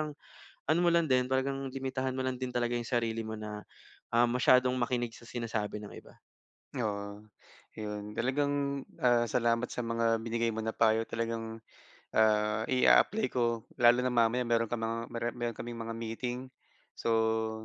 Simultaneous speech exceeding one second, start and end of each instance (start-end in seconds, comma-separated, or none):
none